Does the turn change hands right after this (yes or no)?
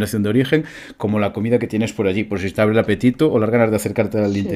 yes